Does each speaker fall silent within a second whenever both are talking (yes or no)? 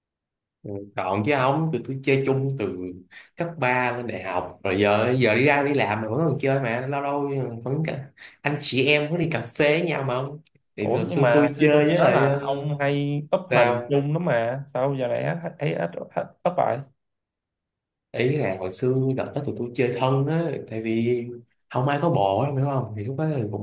no